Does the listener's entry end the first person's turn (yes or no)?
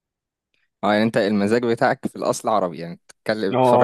yes